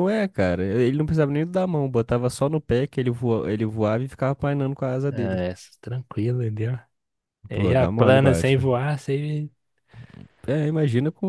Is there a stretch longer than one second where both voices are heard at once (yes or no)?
yes